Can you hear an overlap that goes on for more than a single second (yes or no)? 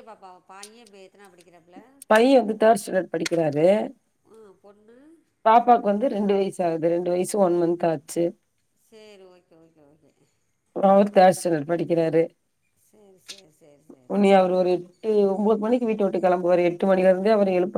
no